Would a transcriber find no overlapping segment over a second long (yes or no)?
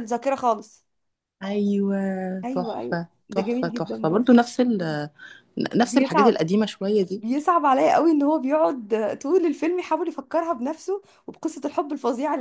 no